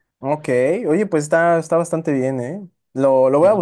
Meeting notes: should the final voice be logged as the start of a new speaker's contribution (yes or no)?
no